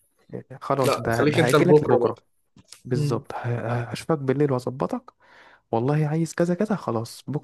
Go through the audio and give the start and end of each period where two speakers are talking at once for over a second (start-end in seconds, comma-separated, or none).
0.8-2.1